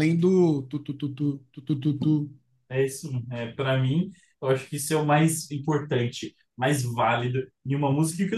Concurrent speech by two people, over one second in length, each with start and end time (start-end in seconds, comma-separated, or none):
none